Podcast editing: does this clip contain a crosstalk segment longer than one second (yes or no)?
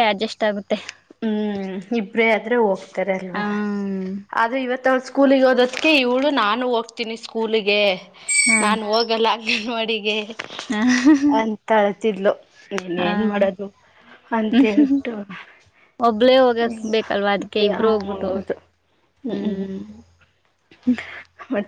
yes